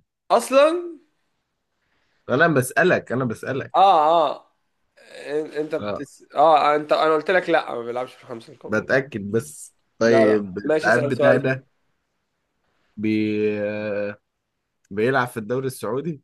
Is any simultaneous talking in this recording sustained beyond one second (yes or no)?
yes